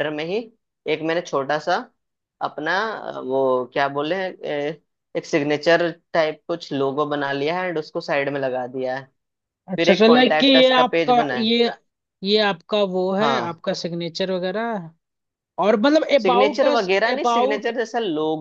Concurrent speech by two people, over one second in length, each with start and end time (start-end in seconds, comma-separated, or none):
9.8-11.5, 16.2-17.7